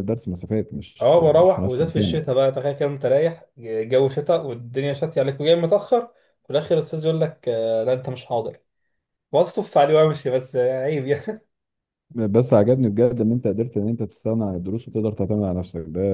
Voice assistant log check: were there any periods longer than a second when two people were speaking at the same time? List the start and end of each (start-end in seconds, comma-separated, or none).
1.0-2.4